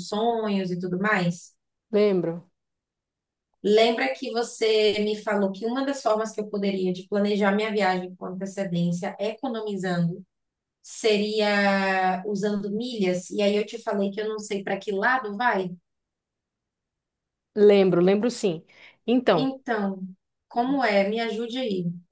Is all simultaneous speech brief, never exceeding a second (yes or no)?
yes